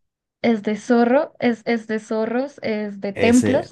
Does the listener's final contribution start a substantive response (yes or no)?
no